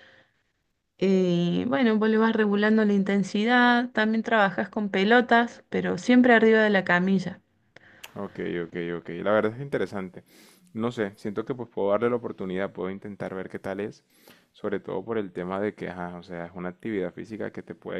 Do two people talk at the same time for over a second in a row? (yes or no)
no